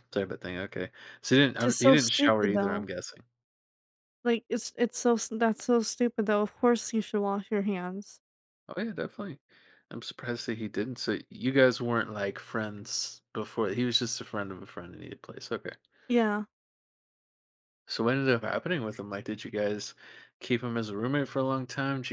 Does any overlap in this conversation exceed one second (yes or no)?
yes